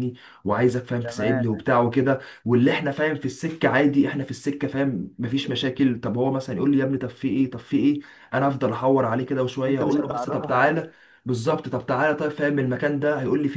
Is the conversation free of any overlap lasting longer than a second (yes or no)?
no